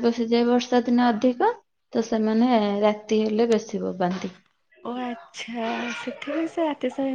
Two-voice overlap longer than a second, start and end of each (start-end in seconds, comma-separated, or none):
none